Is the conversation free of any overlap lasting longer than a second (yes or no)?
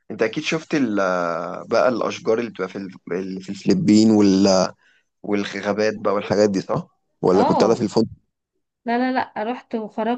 yes